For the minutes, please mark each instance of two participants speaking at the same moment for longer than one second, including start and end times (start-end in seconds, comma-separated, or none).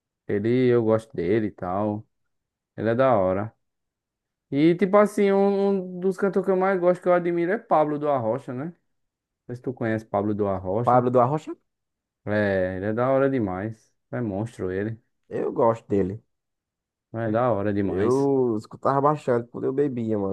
none